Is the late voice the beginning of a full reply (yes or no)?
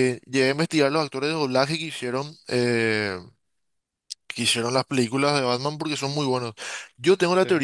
no